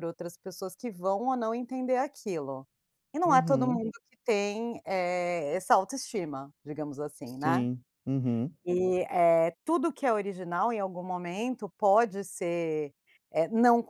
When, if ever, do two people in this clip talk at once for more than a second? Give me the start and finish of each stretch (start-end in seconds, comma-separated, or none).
none